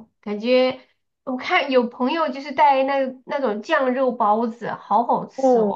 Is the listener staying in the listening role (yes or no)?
no